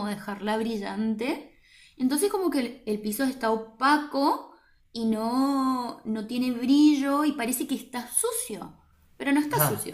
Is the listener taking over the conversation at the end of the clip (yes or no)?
yes